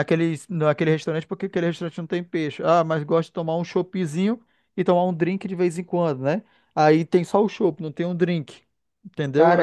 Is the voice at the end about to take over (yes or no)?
yes